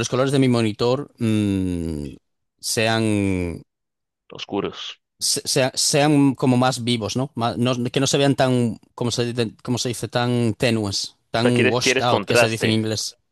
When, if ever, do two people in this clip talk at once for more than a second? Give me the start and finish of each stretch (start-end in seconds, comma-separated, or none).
11.3-12.8